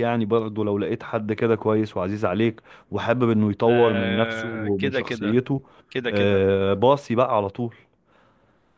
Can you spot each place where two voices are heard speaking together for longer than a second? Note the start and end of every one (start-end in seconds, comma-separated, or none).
3.7-5.4